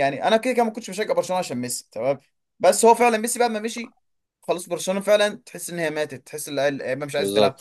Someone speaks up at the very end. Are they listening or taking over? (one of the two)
taking over